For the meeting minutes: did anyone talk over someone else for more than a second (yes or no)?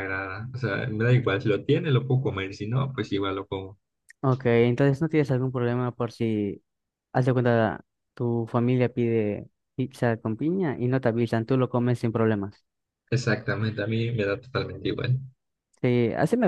no